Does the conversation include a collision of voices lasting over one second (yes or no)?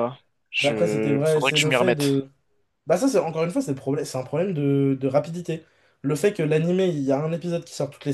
yes